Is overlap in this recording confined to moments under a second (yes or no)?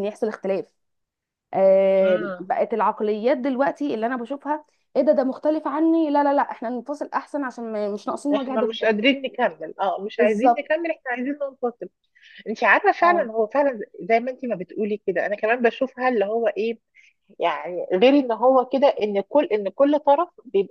yes